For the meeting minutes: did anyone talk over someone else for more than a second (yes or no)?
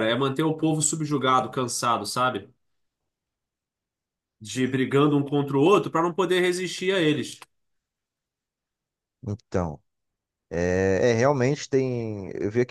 no